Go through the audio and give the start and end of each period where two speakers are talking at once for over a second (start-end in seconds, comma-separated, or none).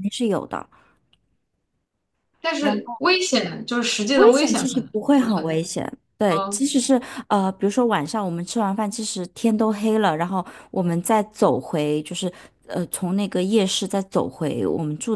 4.2-5.6